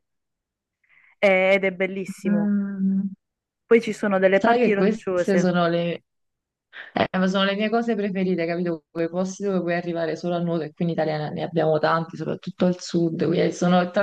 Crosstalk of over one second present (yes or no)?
yes